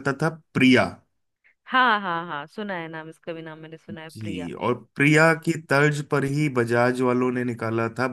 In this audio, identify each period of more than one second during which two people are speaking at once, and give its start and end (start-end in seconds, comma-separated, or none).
none